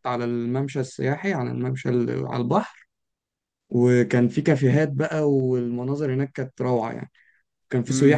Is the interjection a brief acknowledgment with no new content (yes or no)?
no